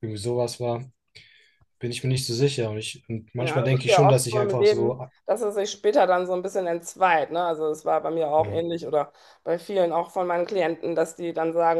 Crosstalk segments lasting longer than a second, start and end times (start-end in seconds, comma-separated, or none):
3.4-5.0